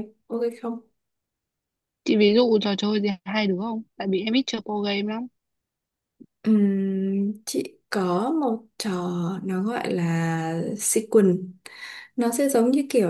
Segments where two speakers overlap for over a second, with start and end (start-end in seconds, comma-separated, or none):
none